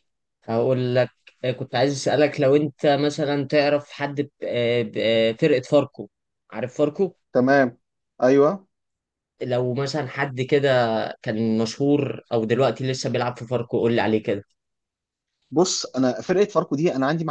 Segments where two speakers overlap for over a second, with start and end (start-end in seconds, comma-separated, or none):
none